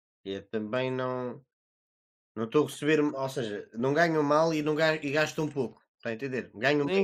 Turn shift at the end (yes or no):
yes